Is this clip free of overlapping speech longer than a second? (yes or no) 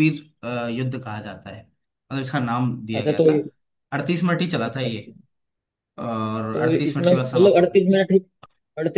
no